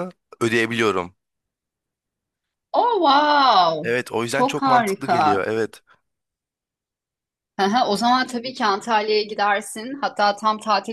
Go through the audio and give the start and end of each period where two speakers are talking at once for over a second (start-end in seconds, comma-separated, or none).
3.8-5.5